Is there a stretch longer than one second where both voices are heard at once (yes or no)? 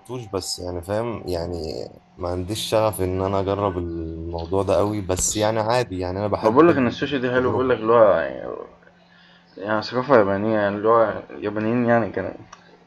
yes